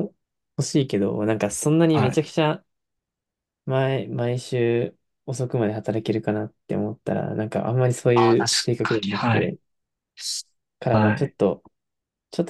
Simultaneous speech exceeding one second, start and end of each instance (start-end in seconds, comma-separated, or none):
8.1-9.6